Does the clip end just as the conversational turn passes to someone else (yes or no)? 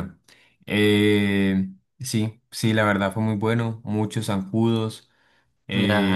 yes